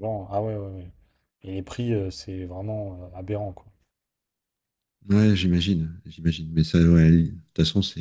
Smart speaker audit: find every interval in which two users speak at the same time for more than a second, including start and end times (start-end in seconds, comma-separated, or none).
none